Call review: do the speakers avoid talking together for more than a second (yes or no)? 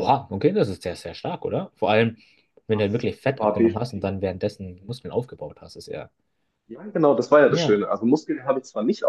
no